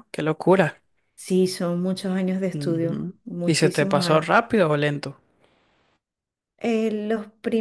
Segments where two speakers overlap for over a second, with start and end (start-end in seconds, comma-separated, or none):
2.5-4.2